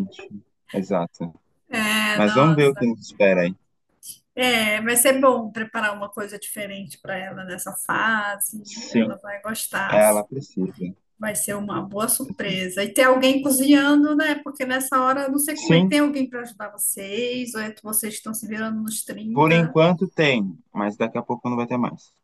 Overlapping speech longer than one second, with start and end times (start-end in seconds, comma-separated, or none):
none